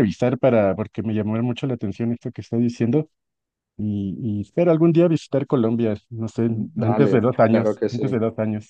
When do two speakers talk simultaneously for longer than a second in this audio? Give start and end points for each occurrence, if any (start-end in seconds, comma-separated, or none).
6.4-8.2